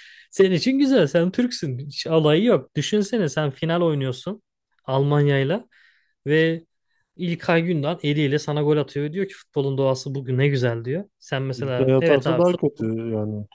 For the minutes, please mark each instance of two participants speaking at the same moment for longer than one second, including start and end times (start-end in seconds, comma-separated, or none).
11.6-12.9